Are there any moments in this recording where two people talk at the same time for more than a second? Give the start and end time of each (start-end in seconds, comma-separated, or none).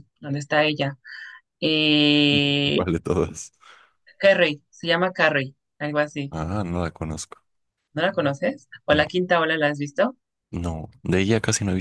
none